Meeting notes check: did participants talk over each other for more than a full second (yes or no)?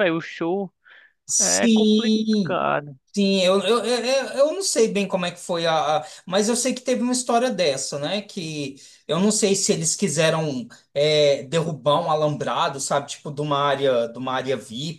yes